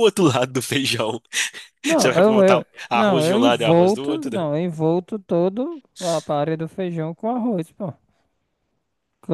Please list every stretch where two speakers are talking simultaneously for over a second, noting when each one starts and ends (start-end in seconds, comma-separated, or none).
2.0-4.5